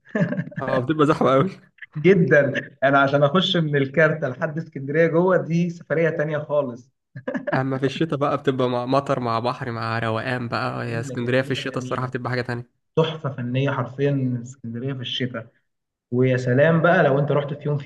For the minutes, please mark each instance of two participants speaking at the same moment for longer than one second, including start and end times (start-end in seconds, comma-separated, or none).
10.7-12.1